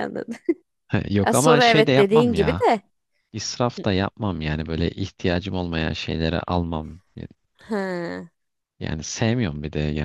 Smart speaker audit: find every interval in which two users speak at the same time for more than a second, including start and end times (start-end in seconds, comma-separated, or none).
1.2-2.6